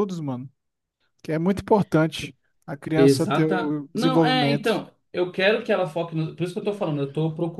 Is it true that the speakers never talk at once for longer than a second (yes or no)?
no